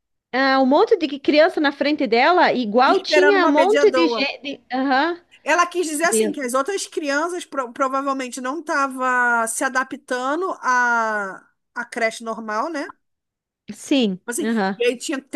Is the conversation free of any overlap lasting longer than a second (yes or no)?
no